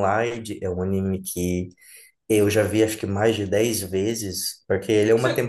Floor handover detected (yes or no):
no